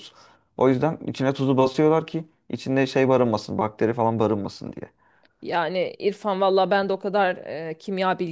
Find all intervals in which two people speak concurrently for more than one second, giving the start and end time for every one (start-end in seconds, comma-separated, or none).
none